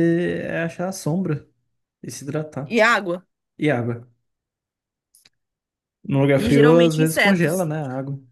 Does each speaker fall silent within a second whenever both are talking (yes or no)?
no